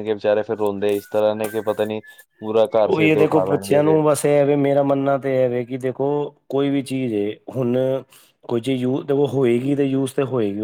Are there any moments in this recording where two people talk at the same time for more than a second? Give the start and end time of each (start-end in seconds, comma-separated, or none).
none